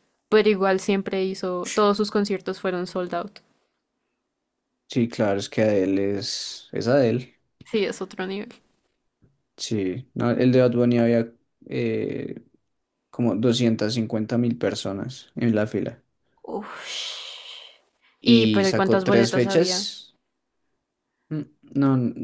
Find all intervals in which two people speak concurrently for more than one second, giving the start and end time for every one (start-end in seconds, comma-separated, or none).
18.2-19.9